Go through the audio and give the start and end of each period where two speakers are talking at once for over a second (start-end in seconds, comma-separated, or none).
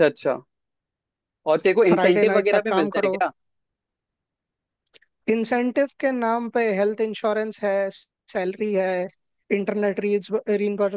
1.9-3.2